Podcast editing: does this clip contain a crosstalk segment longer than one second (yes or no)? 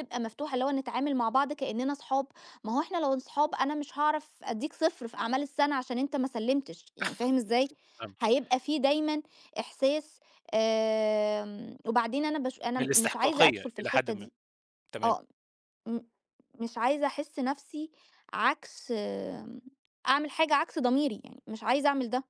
yes